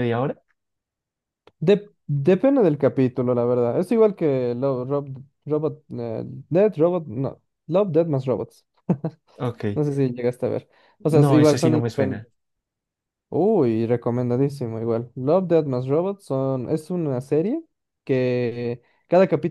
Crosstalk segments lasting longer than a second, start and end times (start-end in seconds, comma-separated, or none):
11.1-12.3